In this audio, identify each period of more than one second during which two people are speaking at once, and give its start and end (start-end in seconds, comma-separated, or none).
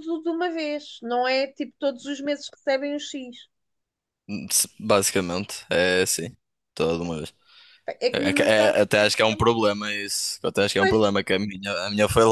8.1-9.6